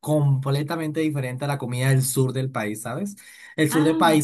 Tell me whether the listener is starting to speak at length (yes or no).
no